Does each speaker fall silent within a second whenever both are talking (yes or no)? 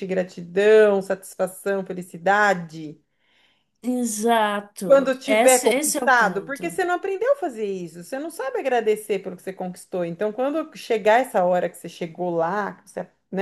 no